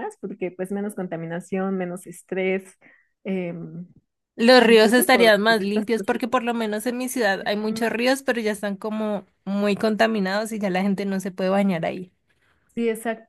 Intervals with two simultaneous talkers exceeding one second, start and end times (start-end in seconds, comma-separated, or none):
4.6-6.2